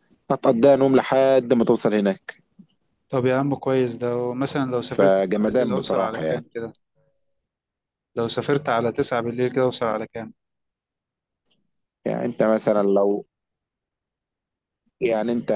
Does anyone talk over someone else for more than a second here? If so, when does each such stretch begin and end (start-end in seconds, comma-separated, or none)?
4.9-6.4